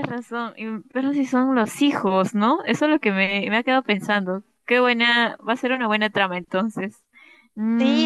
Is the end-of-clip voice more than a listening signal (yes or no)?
yes